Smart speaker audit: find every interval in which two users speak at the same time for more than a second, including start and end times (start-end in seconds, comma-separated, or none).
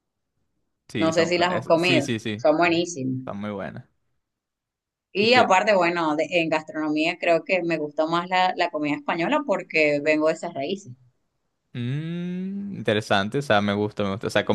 1.0-3.1